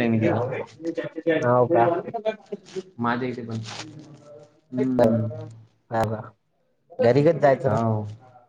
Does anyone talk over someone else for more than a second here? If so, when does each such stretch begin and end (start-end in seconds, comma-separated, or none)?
none